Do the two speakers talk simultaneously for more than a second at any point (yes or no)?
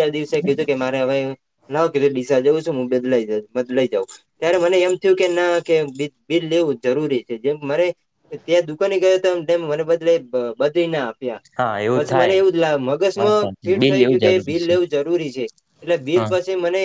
yes